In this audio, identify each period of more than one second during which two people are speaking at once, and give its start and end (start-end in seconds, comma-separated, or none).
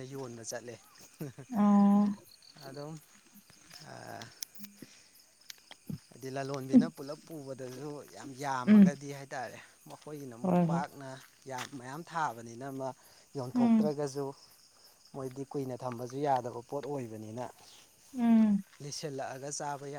none